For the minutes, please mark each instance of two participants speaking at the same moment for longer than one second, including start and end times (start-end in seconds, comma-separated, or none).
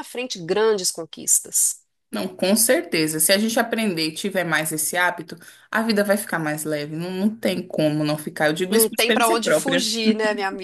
8.7-9.9